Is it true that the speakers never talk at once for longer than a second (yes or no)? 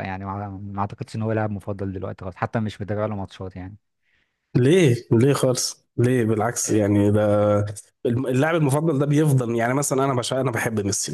yes